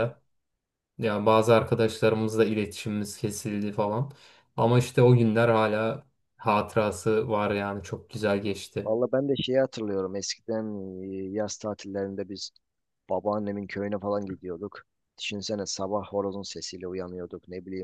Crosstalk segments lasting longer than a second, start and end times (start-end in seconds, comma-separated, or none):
none